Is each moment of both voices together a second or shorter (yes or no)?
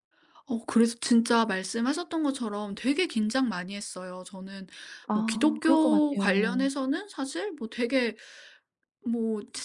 no